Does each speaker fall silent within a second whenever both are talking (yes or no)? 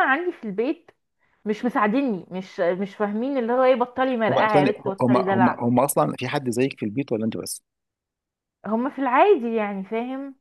no